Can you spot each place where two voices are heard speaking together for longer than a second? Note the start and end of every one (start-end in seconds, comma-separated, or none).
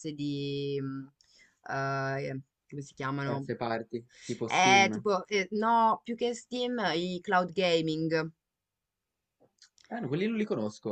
none